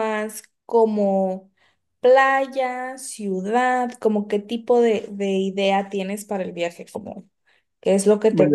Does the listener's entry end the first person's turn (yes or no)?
yes